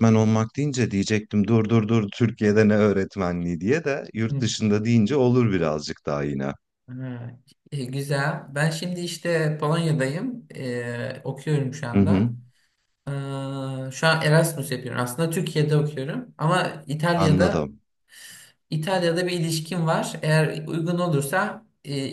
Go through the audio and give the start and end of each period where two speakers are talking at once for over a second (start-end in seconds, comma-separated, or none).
none